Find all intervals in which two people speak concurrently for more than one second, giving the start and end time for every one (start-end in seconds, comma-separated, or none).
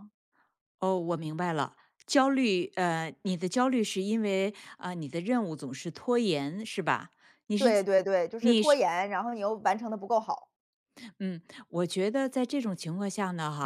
none